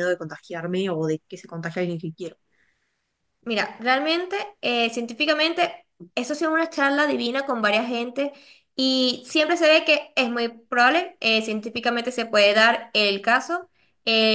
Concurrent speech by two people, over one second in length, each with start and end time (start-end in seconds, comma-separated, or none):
none